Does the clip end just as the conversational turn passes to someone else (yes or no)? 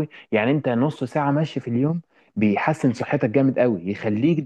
no